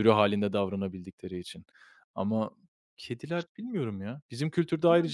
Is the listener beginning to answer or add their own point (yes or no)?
no